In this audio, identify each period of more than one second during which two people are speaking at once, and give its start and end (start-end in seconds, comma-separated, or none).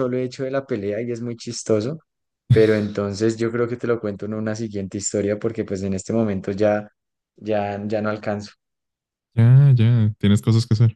none